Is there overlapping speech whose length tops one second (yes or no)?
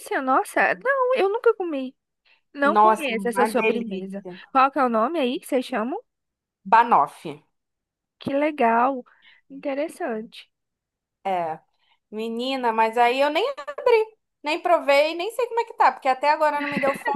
yes